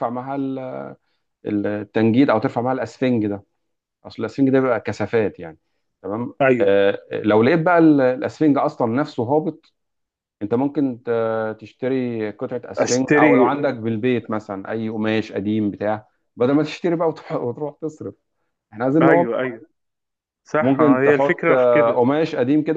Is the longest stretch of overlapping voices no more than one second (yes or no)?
no